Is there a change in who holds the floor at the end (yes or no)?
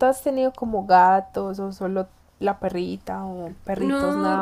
yes